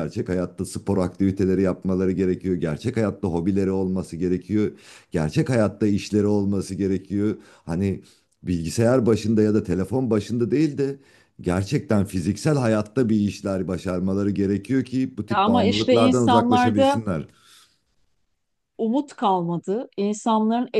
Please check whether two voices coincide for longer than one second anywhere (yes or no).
yes